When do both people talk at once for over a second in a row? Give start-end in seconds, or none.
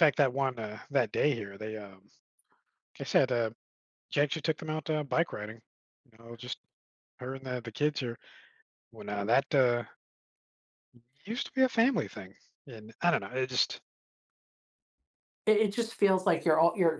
none